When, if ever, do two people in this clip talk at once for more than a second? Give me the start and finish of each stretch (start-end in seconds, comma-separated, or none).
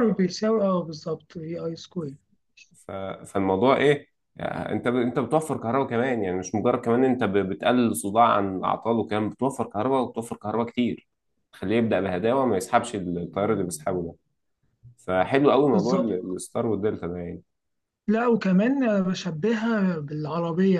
none